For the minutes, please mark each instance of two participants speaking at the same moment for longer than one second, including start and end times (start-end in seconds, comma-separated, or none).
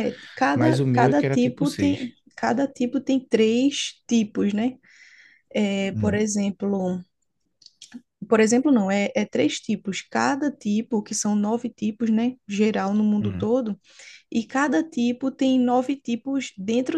0.5-2.1